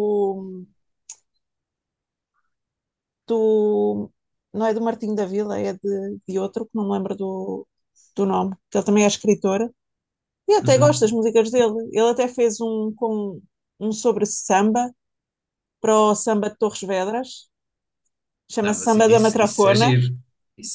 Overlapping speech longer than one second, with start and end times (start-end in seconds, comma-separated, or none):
18.6-19.9